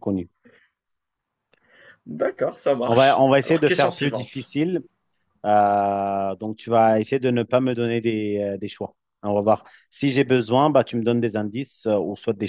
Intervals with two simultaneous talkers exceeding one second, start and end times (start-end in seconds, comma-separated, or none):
2.8-4.5